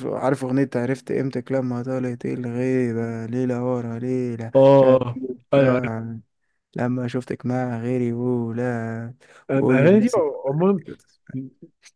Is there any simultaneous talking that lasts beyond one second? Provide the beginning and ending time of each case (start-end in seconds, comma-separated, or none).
none